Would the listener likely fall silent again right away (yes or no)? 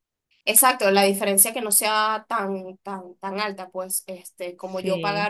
yes